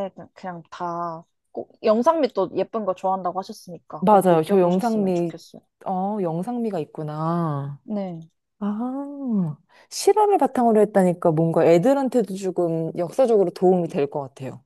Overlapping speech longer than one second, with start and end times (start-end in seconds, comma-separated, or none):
4.0-5.3